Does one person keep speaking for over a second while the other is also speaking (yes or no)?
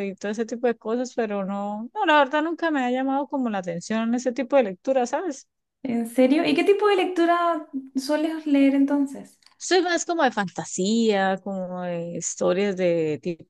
no